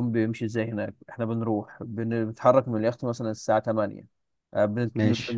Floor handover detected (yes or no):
no